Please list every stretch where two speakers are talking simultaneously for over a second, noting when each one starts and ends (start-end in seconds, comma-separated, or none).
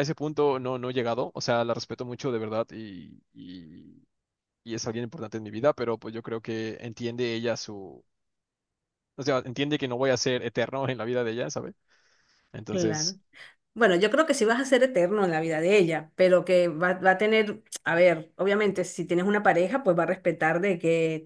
none